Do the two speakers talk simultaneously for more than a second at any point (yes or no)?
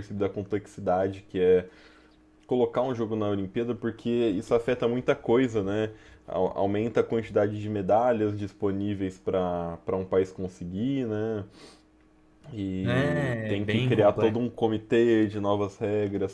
yes